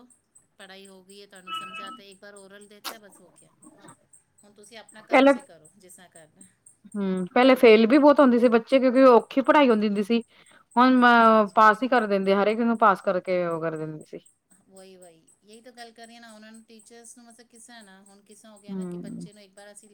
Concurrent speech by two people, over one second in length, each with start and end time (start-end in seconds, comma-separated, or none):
none